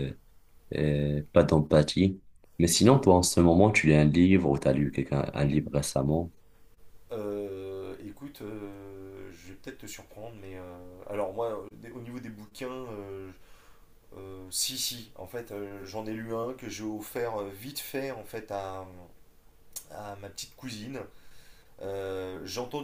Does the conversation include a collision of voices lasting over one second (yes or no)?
no